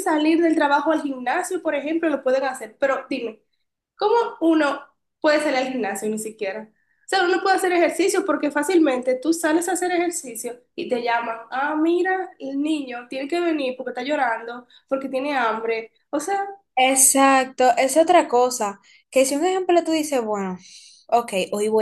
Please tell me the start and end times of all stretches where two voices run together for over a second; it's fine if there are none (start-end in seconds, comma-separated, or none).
none